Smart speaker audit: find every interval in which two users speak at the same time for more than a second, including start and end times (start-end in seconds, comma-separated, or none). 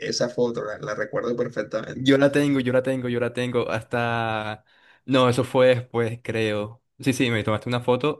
none